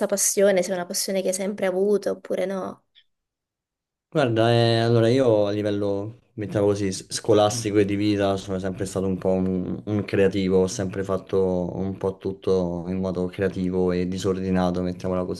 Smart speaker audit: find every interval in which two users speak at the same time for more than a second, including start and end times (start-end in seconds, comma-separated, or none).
none